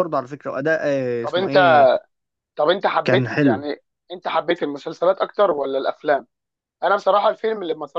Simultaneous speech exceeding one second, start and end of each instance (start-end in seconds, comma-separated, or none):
none